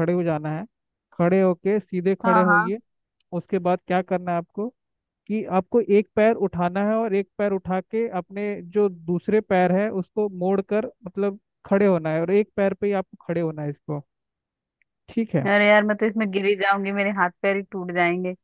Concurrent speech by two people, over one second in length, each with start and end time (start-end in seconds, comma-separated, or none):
none